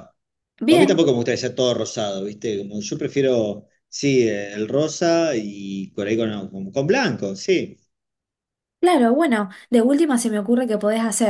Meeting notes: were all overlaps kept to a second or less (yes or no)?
yes